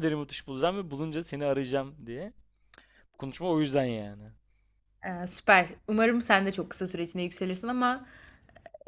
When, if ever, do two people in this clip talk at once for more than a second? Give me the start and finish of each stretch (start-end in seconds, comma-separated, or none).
none